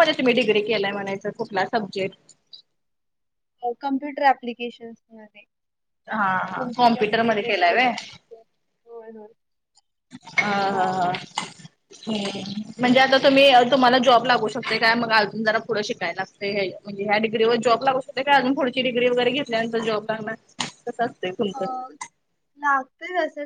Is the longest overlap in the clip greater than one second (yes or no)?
yes